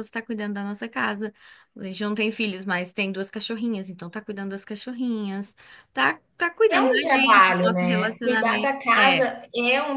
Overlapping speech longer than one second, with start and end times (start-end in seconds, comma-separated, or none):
6.7-9.2